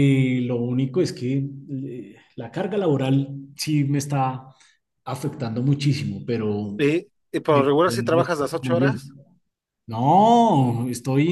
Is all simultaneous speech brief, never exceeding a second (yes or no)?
no